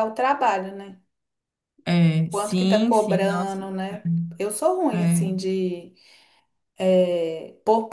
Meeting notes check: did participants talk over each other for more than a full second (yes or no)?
yes